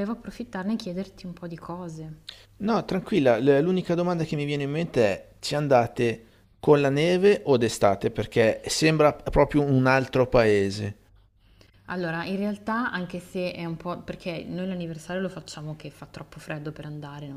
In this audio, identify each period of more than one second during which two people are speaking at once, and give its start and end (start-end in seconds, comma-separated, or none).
none